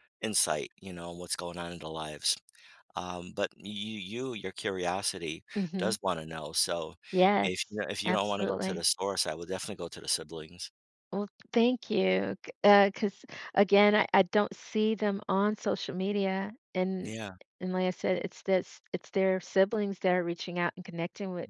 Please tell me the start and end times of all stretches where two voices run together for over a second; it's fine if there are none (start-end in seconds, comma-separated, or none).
7.4-8.8